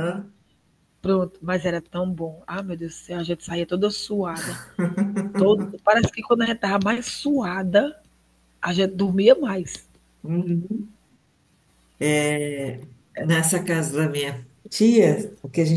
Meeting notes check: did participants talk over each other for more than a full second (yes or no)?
no